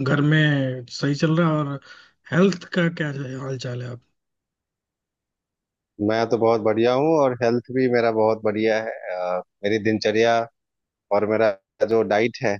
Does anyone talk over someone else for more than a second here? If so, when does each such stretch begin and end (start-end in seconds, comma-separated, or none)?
none